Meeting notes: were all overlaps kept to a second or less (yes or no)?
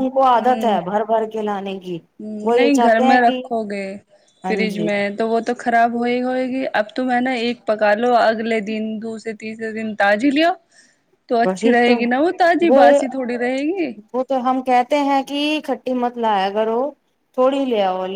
yes